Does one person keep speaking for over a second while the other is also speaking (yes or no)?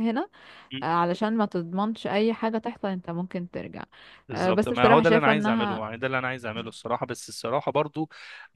yes